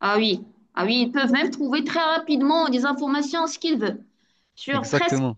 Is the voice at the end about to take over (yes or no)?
no